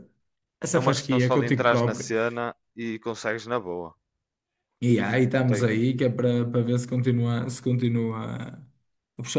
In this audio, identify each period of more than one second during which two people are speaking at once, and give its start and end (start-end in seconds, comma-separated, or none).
0.7-2.1